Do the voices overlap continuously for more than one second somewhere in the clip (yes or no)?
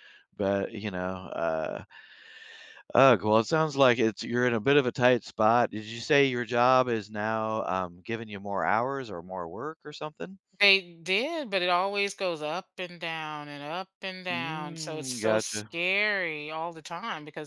yes